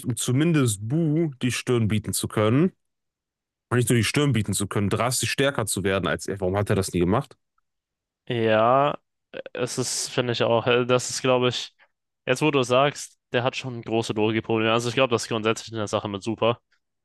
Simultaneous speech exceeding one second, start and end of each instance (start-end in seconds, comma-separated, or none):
none